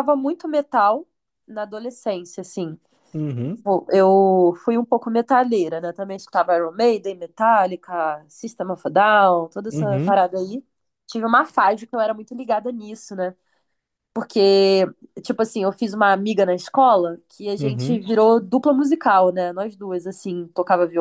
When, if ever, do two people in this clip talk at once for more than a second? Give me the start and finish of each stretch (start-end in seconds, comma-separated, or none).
none